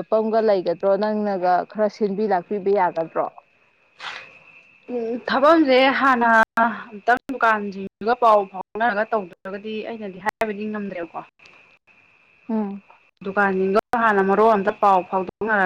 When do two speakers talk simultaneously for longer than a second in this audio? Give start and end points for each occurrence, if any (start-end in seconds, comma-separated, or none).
none